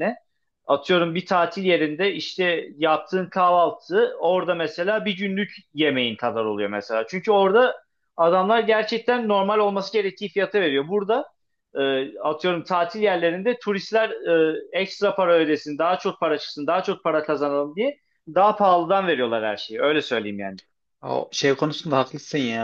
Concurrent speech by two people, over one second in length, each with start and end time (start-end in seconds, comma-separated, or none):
none